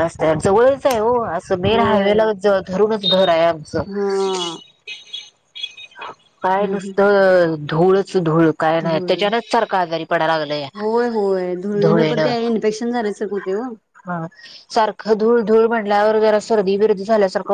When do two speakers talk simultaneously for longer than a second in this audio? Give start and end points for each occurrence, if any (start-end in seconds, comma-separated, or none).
none